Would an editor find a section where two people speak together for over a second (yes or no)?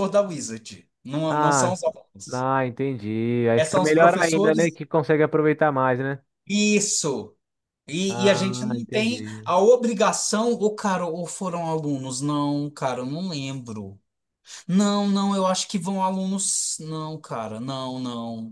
yes